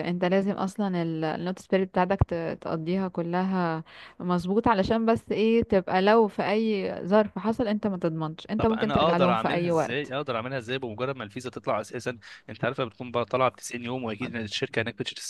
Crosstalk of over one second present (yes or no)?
yes